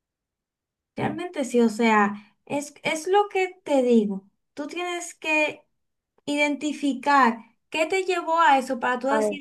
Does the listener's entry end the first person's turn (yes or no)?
no